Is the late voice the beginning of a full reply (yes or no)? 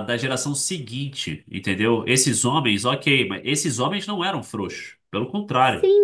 yes